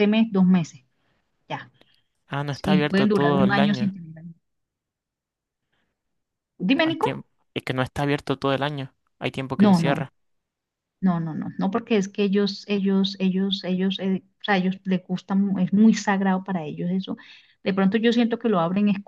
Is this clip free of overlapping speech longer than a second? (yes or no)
no